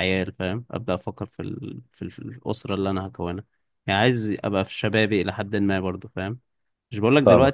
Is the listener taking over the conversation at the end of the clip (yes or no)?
no